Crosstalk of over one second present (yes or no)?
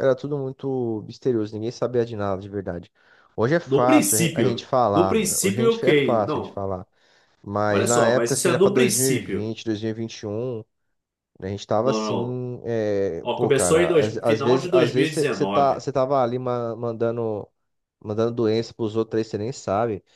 yes